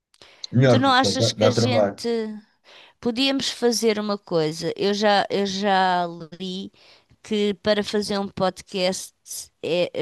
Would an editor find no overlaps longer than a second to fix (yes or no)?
no